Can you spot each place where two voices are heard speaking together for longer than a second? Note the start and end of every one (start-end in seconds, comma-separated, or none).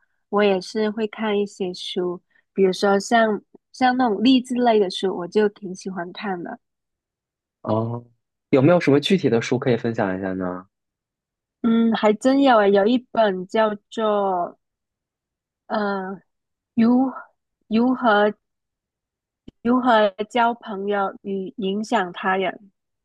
none